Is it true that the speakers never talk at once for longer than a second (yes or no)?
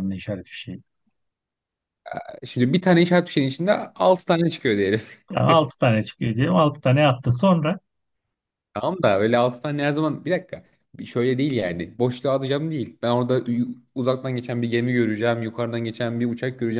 yes